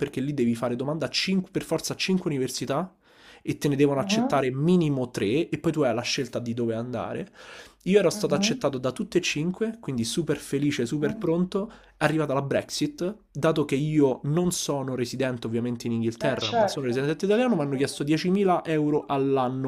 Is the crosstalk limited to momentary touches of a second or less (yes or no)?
no